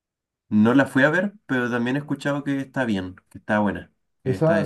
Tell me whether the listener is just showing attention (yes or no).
no